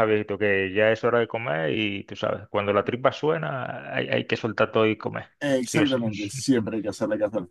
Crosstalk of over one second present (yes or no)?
no